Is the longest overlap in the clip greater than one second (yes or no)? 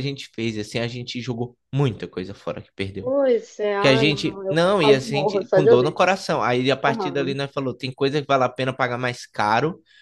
yes